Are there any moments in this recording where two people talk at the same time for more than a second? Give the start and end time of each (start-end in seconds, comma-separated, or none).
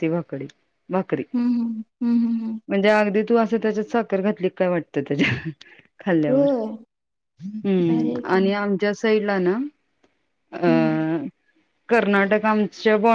none